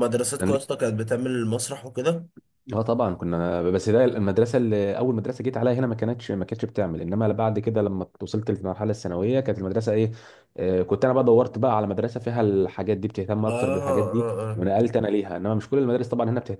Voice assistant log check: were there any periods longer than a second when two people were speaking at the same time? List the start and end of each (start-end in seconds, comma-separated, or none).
13.5-14.9